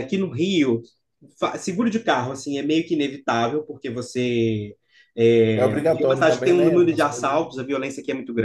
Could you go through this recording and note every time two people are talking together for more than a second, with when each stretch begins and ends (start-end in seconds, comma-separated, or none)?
5.5-7.5